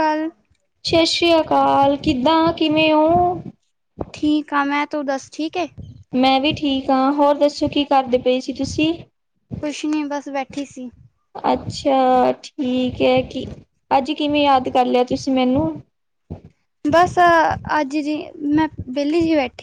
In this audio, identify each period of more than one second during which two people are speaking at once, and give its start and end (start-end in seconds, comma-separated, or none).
none